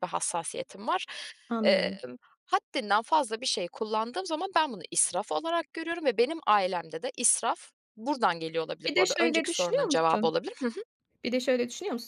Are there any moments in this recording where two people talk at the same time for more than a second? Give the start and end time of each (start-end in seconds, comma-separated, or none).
8.8-10.3